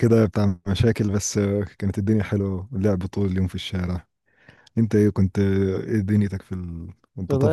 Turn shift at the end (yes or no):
yes